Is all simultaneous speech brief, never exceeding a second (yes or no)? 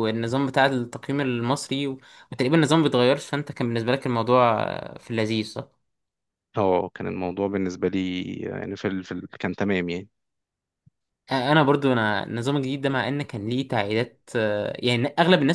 yes